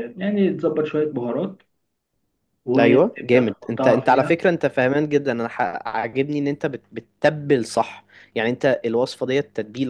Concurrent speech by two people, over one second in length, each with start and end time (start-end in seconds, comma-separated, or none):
2.8-4.3